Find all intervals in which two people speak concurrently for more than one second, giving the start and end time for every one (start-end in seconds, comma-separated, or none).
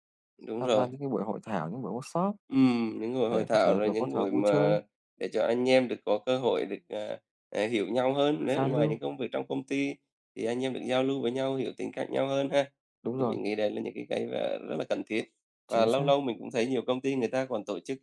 3.3-4.8